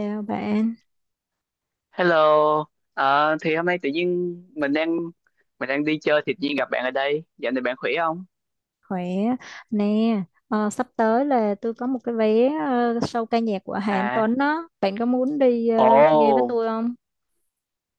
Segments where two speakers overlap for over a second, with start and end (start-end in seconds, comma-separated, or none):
none